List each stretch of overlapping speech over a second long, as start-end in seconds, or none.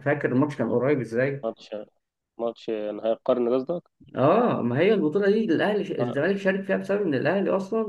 none